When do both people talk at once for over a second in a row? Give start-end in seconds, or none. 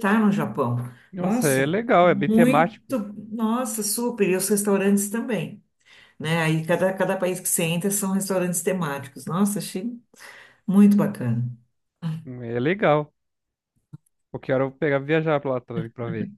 1.2-3.0